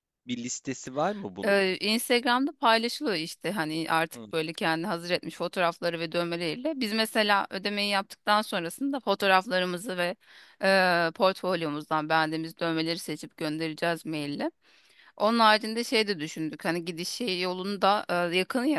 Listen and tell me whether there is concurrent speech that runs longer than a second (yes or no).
no